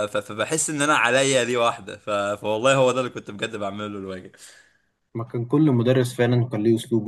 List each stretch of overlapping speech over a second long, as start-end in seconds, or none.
none